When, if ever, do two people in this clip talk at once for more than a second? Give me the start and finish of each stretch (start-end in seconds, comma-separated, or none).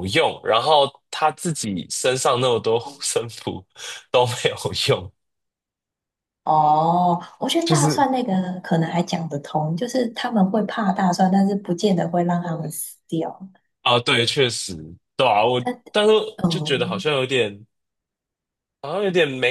none